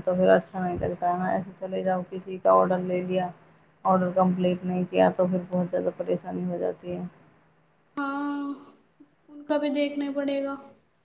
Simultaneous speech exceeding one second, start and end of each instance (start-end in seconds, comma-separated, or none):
none